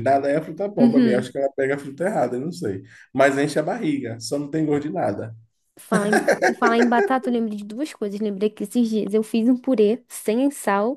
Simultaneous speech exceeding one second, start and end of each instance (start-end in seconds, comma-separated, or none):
none